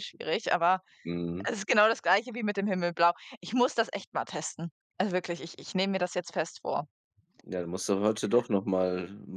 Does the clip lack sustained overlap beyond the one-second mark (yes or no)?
yes